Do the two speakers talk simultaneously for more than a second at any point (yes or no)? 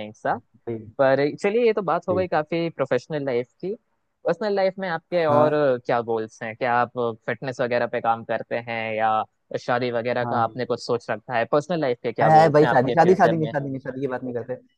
yes